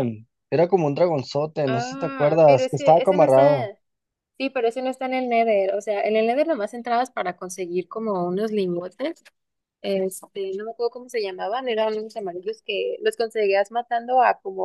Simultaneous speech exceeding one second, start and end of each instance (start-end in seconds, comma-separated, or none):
1.7-3.7